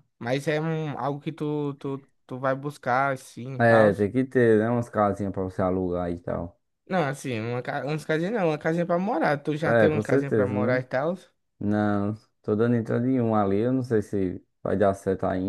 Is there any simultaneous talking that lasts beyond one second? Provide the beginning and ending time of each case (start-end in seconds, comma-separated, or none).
9.6-10.8